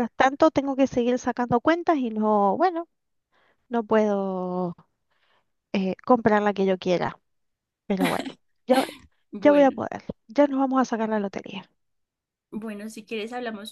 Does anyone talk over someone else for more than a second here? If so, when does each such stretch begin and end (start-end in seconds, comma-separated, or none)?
none